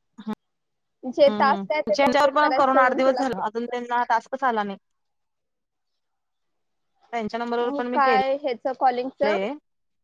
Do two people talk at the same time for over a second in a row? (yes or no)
yes